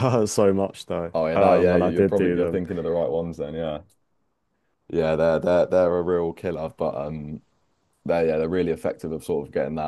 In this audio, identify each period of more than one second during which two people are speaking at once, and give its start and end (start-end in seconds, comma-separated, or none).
1.1-2.6